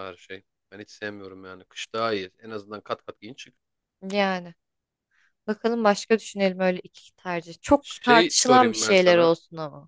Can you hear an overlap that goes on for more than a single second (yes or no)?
yes